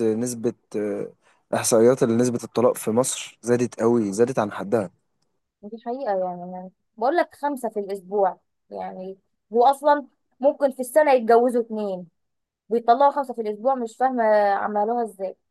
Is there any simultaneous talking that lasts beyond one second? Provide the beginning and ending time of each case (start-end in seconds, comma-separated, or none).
none